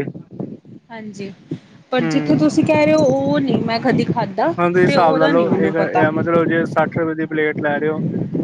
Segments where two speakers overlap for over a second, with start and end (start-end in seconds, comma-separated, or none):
4.6-6.0